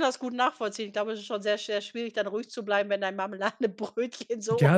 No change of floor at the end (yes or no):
no